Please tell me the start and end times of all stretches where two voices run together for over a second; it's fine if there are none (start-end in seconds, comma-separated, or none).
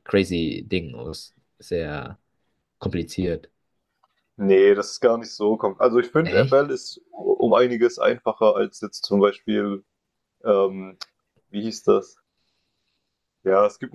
none